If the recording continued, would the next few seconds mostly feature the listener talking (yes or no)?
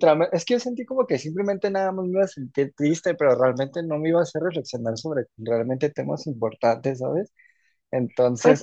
yes